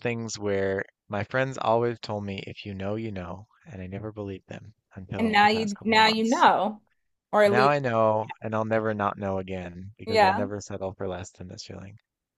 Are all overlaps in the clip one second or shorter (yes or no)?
no